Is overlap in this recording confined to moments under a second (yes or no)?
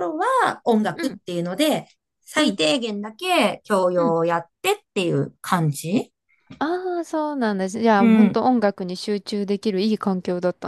yes